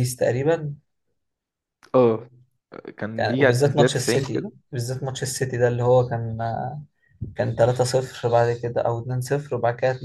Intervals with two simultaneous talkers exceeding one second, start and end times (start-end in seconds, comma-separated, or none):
3.2-4.5